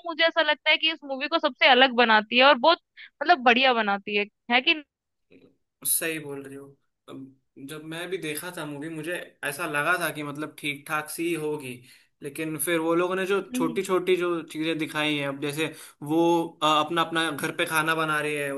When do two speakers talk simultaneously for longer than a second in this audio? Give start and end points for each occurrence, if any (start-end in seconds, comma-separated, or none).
none